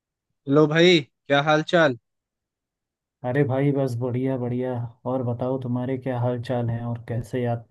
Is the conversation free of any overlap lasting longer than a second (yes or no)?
yes